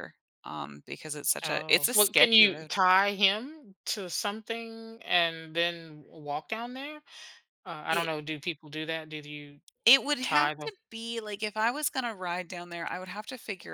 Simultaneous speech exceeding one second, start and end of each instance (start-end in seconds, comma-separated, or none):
1.4-2.7